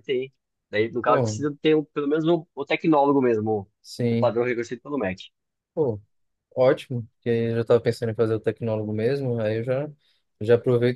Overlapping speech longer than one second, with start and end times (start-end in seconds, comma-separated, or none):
none